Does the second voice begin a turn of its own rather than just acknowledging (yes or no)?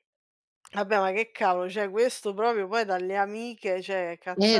yes